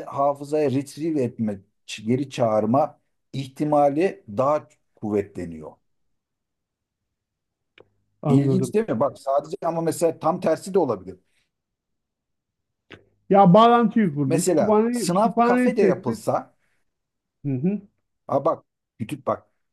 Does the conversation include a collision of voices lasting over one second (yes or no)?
yes